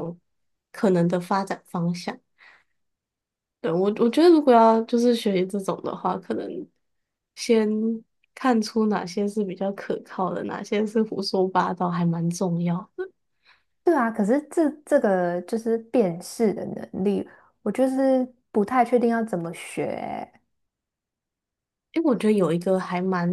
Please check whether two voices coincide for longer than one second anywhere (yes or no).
no